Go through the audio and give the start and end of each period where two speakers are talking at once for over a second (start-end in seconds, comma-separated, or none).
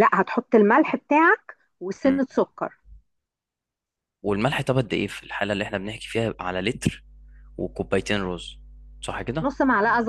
none